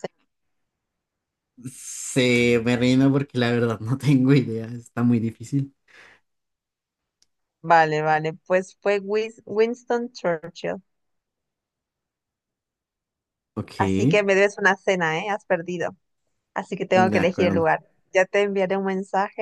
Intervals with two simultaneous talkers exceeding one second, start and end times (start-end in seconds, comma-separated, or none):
none